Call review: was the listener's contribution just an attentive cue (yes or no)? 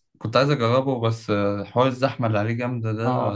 no